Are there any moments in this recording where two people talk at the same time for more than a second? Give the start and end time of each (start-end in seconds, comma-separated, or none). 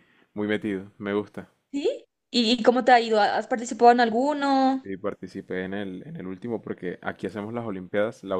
none